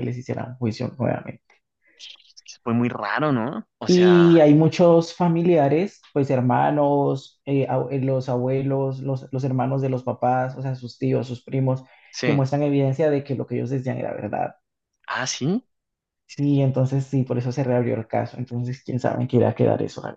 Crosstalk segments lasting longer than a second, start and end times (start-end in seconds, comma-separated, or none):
none